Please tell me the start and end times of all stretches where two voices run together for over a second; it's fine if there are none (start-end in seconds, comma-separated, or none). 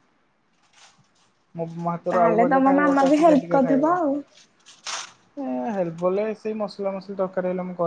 2.1-4.0